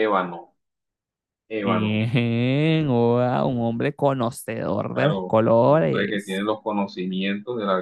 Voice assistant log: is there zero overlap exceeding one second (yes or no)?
no